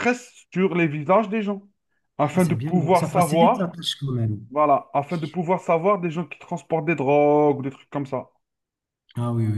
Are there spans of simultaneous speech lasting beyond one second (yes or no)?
yes